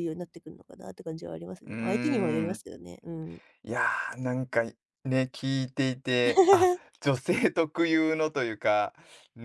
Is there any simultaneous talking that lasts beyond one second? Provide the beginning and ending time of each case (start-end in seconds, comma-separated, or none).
none